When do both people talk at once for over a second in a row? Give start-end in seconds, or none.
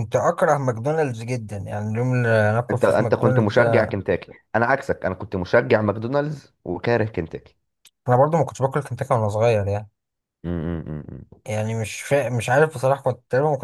2.7-4.0